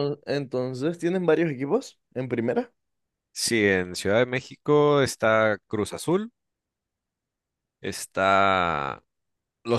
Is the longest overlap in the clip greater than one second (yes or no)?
no